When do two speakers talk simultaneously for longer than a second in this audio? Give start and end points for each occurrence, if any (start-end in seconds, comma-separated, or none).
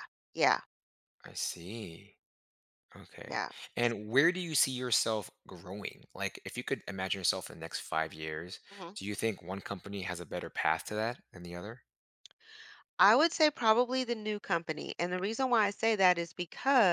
none